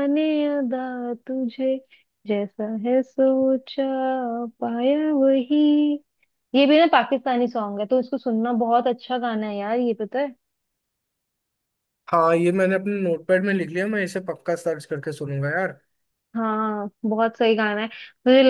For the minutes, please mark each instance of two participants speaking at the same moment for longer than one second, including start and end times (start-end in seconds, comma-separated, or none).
none